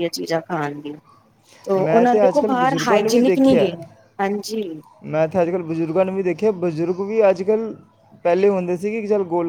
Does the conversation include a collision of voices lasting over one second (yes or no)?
yes